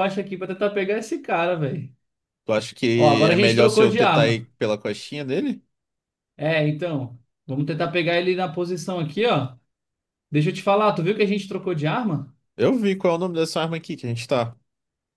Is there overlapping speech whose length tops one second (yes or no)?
yes